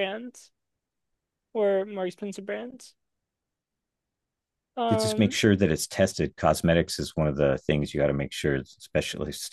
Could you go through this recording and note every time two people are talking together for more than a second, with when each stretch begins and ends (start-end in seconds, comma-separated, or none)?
none